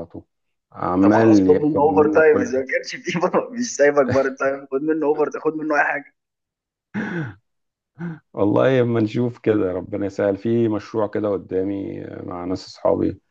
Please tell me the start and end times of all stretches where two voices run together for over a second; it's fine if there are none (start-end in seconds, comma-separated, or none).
1.0-2.6